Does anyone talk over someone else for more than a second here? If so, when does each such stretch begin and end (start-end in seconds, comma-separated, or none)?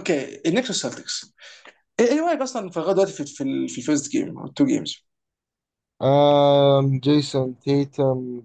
none